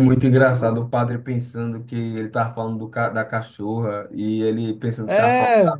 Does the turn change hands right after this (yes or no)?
no